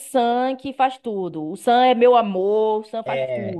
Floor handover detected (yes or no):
yes